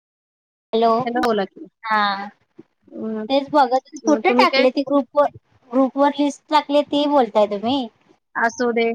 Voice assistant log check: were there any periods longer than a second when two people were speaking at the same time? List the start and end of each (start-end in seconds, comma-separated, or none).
none